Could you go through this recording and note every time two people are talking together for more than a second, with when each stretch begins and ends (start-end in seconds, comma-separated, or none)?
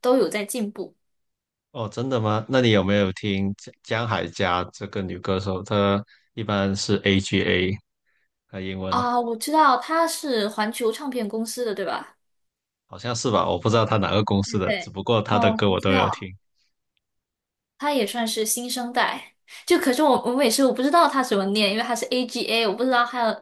14.4-16.3